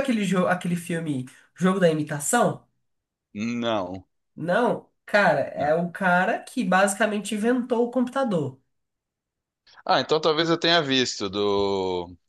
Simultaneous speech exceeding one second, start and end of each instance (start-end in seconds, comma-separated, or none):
none